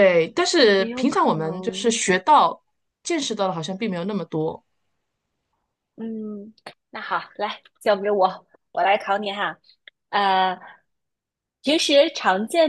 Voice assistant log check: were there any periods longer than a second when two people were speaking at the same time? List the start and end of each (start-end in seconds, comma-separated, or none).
0.8-2.0